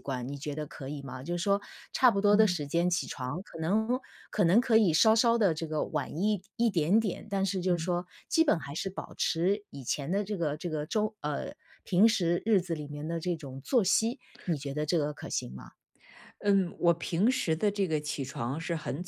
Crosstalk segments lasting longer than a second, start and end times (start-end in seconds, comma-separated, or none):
none